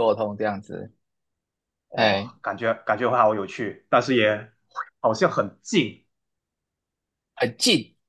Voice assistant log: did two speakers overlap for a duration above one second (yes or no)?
no